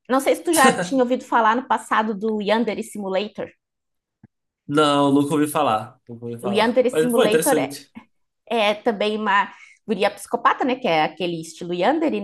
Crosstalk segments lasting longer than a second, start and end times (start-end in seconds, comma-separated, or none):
6.4-7.8